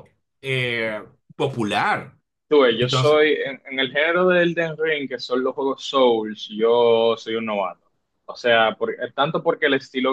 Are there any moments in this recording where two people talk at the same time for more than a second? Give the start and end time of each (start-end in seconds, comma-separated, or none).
none